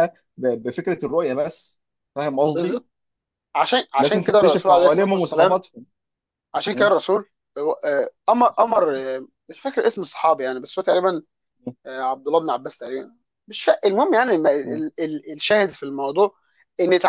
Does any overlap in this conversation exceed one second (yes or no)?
yes